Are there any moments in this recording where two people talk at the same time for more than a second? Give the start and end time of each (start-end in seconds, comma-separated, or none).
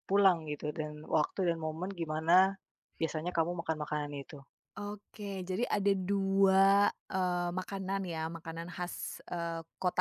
none